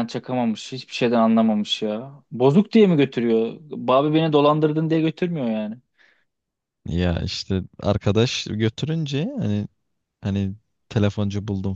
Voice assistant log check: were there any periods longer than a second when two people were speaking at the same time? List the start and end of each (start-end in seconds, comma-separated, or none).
none